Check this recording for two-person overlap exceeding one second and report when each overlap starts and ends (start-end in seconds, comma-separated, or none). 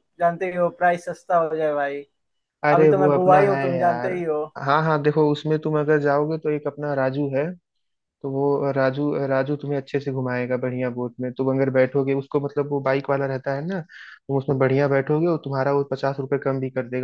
2.7-4.1